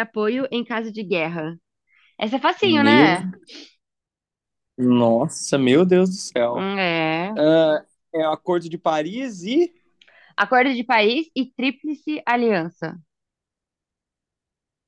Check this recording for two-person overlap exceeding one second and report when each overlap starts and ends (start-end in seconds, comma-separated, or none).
none